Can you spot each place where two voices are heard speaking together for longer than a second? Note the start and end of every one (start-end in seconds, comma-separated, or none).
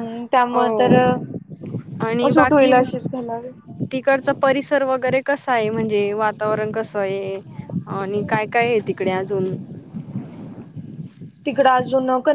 none